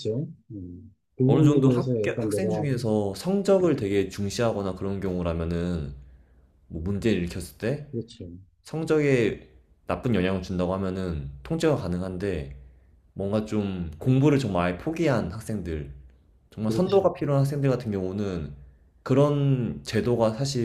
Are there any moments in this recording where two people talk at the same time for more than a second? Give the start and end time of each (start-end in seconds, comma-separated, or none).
1.2-2.6